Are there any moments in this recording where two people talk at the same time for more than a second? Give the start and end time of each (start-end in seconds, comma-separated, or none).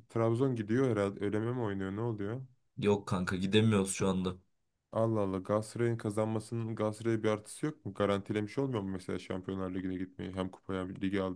none